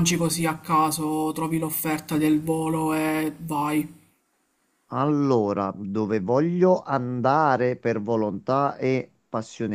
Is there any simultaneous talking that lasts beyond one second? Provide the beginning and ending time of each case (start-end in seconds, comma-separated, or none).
none